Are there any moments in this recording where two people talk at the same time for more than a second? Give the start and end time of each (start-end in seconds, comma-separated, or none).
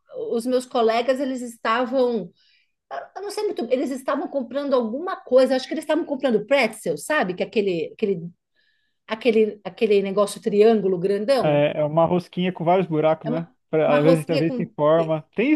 13.2-14.7